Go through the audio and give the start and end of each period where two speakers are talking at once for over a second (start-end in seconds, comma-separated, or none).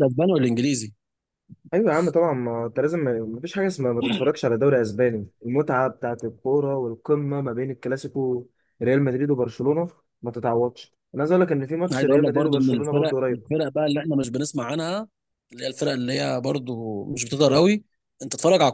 11.9-13.4